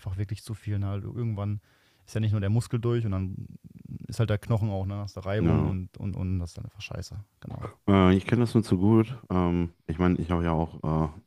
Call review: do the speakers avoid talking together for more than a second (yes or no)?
yes